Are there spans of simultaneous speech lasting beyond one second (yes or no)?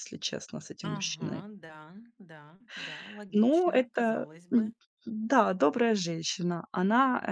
yes